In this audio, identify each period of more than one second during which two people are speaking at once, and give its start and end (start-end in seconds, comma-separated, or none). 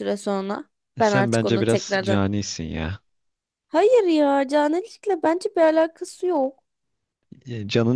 1.0-2.2